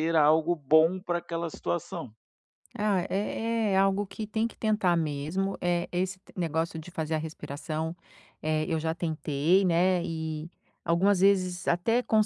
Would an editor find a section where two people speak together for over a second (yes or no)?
no